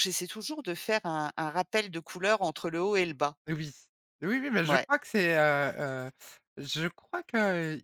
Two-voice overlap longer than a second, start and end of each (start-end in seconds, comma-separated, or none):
none